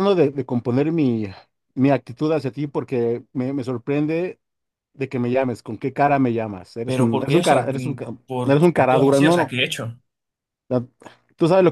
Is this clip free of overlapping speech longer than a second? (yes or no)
no